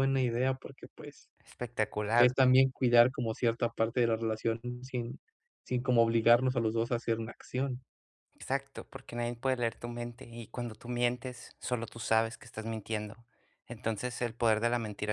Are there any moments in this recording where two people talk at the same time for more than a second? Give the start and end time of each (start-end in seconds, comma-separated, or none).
none